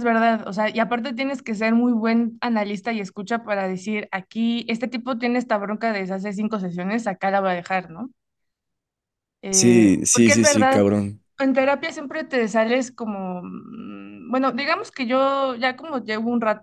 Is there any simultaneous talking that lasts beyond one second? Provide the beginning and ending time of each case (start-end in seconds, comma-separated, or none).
9.5-10.8